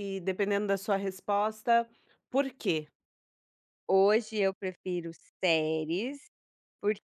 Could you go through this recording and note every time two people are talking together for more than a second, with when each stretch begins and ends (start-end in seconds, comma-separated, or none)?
none